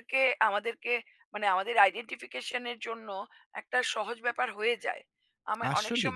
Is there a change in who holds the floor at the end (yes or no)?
no